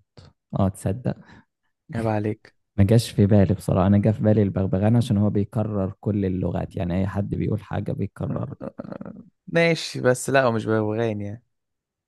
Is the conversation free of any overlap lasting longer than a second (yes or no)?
yes